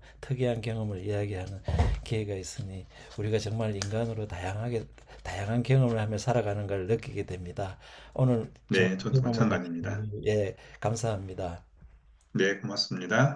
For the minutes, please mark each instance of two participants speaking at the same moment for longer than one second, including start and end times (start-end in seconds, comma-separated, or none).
8.7-10.1